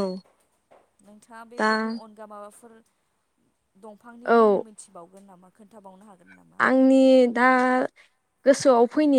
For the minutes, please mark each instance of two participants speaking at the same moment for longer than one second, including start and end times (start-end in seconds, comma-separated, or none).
none